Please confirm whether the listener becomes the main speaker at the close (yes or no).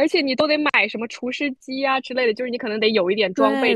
yes